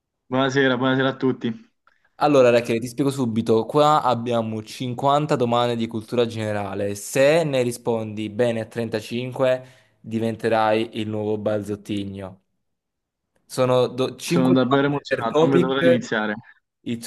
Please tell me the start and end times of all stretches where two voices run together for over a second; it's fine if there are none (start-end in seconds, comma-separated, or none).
14.2-16.1